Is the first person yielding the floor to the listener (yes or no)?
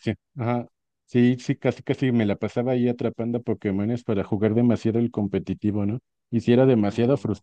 no